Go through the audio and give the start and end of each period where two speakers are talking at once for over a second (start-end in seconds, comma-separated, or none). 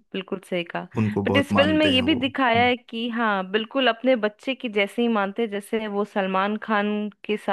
1.3-2.7